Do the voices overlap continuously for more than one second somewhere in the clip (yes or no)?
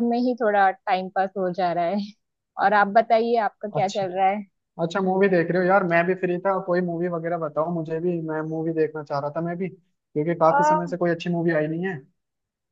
no